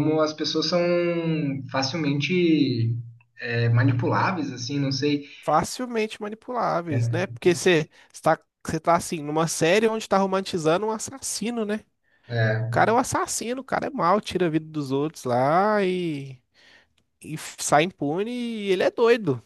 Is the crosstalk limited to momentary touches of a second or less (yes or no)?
yes